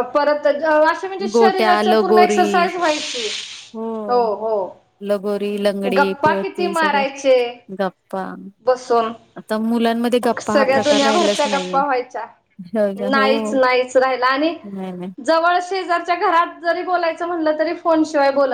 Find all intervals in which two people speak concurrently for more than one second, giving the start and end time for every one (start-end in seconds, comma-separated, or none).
1.3-2.6, 10.4-11.8